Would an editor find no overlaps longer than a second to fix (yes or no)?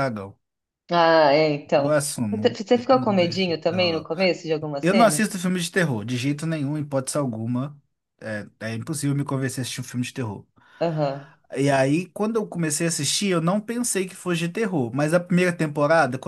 no